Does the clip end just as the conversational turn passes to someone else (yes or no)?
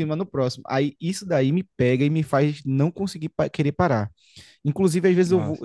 no